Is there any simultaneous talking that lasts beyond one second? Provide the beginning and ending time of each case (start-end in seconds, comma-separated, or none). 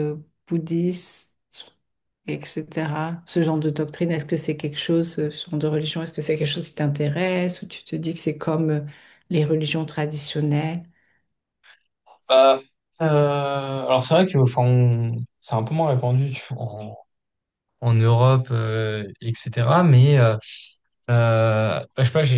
none